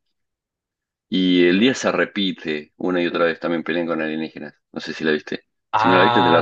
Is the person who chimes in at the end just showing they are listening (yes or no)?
no